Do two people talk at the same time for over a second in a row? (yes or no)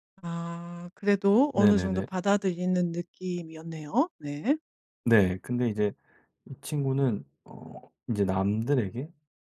no